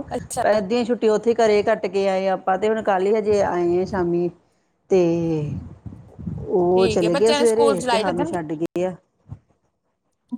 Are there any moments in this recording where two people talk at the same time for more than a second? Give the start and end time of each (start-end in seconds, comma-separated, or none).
6.7-8.4